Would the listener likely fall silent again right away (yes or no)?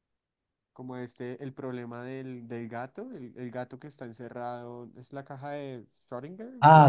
no